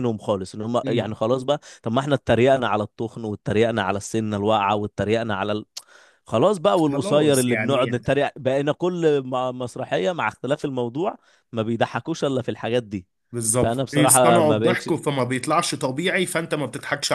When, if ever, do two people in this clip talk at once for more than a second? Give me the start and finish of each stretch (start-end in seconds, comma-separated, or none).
6.8-8.0, 13.6-14.9